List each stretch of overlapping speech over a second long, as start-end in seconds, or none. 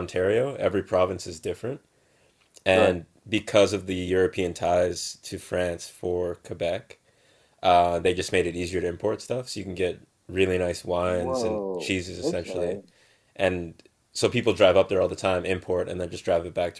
11.0-12.8